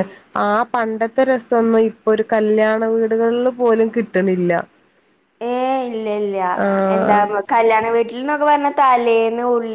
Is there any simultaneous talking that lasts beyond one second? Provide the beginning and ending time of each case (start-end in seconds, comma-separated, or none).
none